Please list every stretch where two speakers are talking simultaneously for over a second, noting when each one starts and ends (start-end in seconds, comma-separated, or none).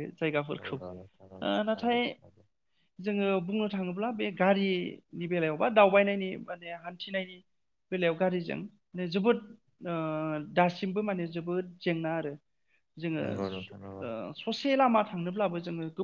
0.6-2.0